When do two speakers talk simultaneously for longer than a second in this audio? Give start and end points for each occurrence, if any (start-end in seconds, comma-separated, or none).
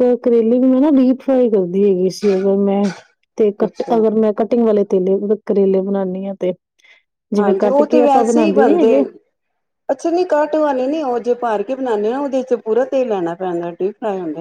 7.4-8.9